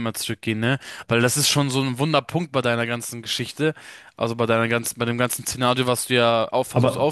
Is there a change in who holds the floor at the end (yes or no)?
no